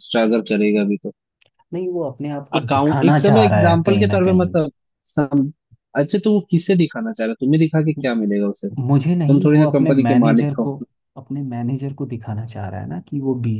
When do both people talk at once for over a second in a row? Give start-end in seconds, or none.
2.6-4.6, 8.9-10.7